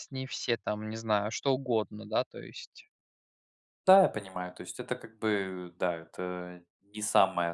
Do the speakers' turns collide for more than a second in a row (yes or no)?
no